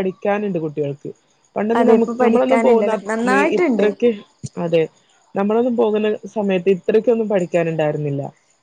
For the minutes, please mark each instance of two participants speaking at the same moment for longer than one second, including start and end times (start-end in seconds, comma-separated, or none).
1.8-3.9